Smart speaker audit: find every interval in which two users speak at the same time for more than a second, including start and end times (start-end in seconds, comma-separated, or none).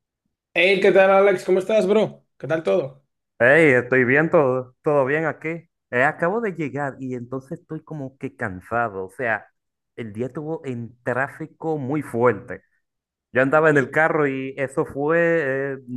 none